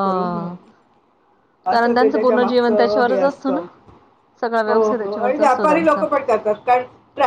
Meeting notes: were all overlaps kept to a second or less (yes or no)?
no